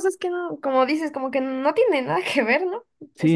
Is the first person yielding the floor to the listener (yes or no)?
yes